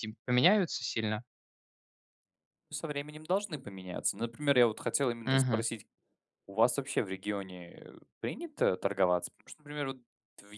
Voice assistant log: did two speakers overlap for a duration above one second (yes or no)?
no